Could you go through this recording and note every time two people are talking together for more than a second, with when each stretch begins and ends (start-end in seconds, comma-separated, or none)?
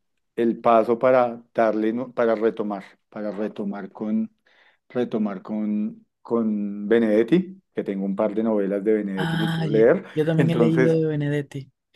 9.2-11.0